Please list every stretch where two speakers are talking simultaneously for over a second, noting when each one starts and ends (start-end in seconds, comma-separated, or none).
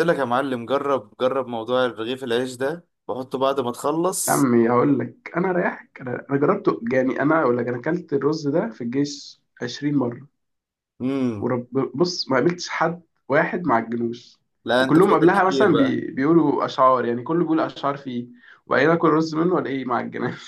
14.8-16.0